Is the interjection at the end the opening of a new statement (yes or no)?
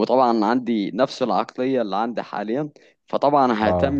no